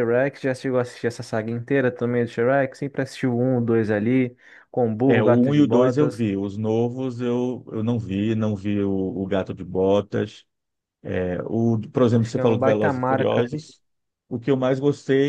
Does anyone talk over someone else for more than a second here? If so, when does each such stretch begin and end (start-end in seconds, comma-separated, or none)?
5.0-6.2, 12.1-13.7